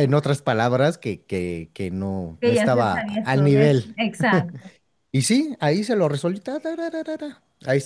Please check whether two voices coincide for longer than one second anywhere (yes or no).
yes